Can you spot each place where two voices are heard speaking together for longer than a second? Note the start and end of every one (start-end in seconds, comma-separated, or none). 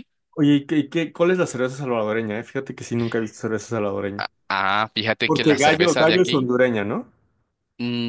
5.2-6.5